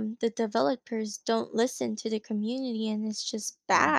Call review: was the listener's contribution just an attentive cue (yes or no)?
no